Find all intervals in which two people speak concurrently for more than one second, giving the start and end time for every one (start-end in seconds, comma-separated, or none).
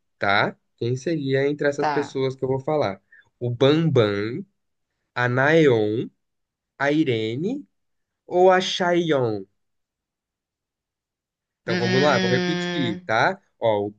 11.7-13.1